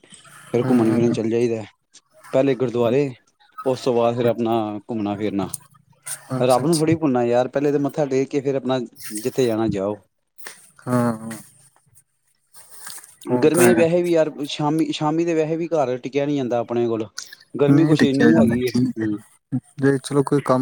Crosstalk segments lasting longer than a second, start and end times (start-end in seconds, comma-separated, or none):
17.7-19.2